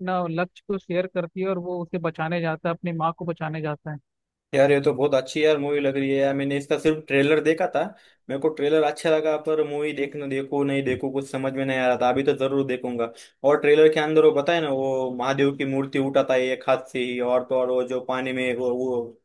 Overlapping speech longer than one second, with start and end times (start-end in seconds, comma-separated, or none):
none